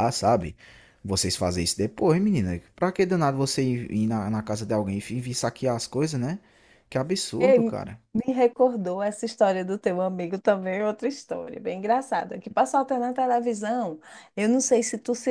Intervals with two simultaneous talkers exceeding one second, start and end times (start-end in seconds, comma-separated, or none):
none